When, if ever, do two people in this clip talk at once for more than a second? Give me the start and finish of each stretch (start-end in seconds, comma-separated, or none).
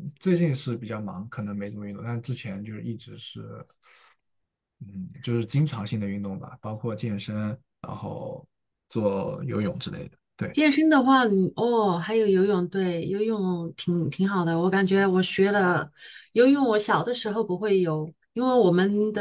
none